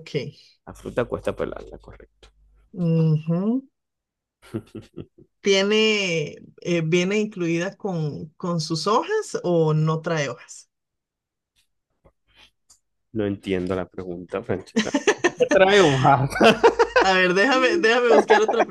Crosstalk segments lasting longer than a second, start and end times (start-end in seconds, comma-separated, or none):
none